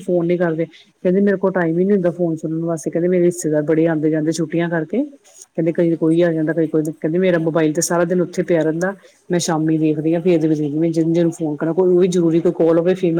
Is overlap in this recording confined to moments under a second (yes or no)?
no